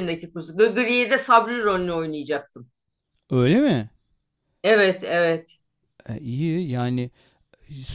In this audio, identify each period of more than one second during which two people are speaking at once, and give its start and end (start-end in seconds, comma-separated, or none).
none